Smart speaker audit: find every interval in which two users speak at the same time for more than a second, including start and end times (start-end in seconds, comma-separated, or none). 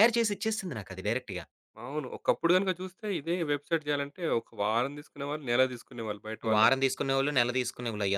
none